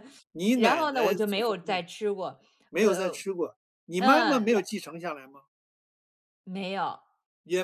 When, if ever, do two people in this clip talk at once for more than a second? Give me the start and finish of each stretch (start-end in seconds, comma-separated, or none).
0.5-1.8